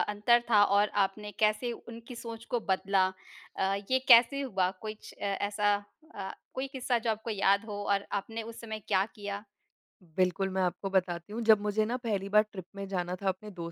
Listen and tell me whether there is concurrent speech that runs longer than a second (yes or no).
no